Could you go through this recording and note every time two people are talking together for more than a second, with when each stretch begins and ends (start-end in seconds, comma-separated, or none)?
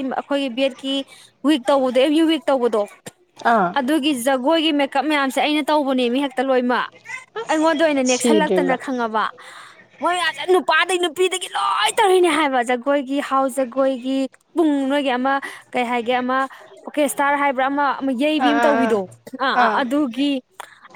7.5-8.8